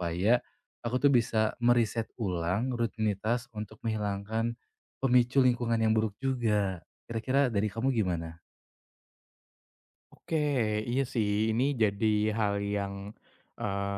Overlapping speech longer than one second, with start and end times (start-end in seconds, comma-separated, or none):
none